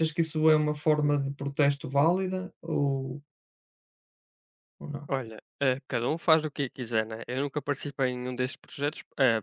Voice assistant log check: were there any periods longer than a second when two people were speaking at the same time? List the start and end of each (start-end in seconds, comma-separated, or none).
none